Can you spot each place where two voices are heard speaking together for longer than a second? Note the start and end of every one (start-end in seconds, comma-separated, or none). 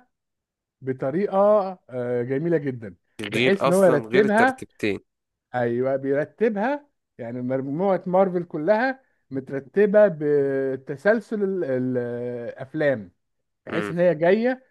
3.2-4.6